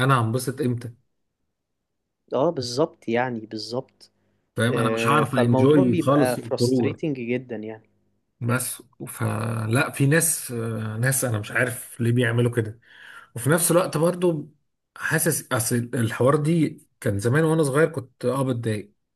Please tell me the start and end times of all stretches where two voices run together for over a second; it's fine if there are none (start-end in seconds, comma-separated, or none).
4.7-7.0